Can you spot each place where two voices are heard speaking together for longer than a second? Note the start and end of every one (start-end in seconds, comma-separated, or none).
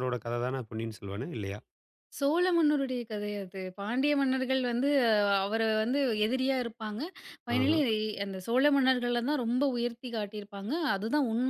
none